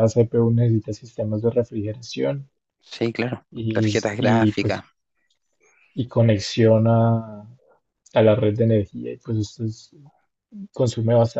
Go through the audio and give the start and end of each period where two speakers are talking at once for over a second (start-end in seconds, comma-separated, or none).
3.5-4.8